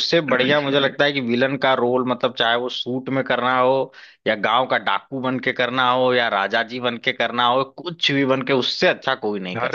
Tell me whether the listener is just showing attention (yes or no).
no